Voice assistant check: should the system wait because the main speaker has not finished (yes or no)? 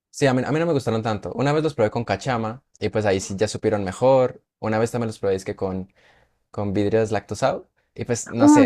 no